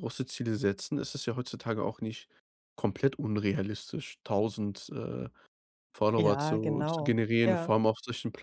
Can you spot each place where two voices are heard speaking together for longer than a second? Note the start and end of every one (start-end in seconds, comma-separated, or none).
6.2-7.7